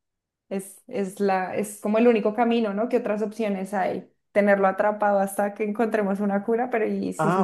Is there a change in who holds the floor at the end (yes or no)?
yes